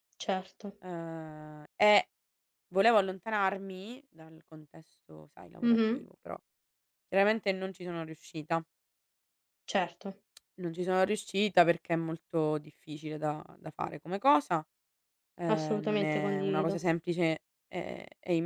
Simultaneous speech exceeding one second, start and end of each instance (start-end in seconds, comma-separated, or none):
15.5-16.7